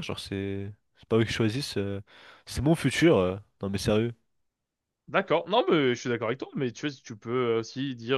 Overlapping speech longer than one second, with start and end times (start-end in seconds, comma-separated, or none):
none